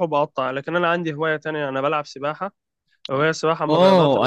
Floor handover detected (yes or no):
yes